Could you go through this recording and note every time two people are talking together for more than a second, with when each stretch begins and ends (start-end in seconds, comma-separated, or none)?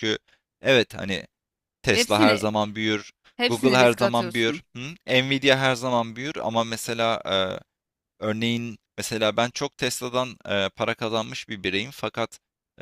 3.4-4.6